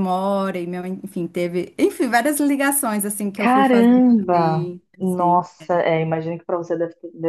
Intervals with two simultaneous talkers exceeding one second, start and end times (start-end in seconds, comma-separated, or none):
3.4-5.8